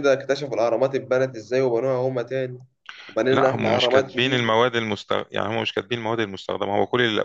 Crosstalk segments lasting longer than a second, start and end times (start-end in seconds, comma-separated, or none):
3.3-4.6